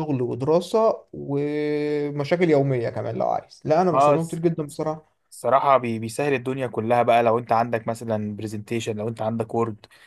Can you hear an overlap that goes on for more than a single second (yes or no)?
no